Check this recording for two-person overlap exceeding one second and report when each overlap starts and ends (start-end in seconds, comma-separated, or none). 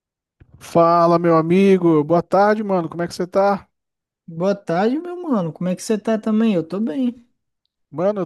none